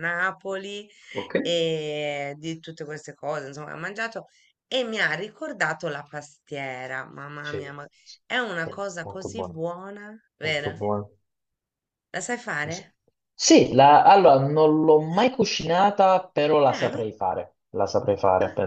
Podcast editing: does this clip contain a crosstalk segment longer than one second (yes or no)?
no